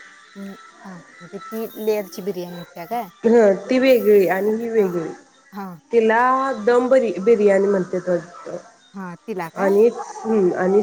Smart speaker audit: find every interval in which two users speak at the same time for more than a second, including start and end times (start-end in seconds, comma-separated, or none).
none